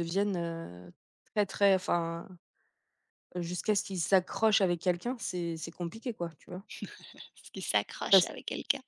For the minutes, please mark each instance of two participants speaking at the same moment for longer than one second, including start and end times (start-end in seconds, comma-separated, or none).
none